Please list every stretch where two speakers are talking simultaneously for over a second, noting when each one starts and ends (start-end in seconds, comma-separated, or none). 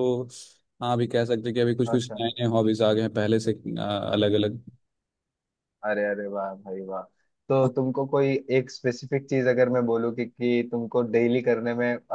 none